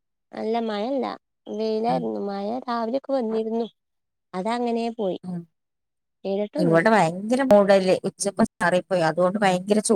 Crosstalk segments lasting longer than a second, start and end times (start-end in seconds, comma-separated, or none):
none